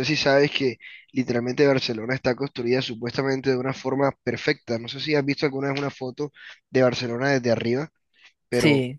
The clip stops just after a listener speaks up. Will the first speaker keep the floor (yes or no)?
yes